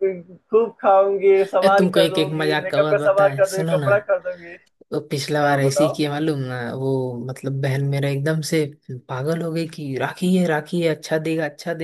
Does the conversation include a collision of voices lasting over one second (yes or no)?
yes